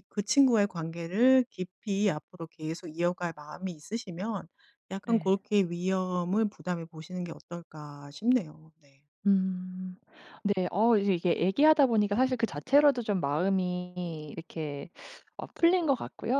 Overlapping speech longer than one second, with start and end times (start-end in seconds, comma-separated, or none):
none